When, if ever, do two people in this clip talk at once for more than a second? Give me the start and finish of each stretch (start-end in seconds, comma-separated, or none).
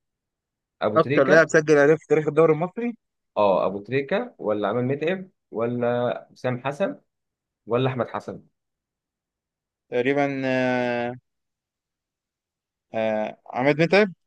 none